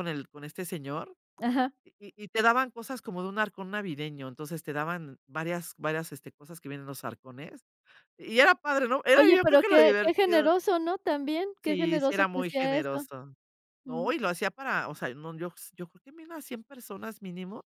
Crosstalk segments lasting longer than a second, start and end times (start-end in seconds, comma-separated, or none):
9.2-10.5, 11.7-13.1